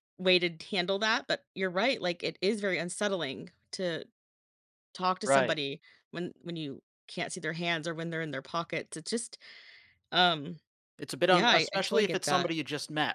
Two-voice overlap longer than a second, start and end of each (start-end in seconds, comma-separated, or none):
11.3-12.5